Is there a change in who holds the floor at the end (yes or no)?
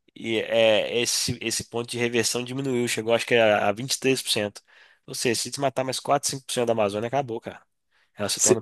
yes